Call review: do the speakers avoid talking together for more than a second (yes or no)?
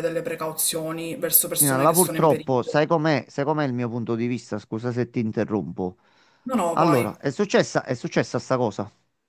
no